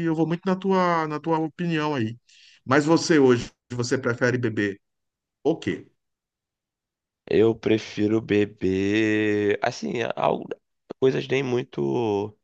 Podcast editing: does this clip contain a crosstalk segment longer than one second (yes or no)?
no